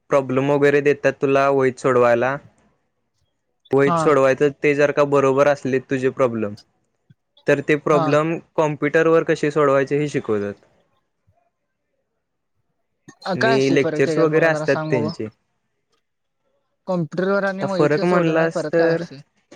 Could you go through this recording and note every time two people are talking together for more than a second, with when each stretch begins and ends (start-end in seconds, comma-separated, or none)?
13.4-15.1, 17.6-19.0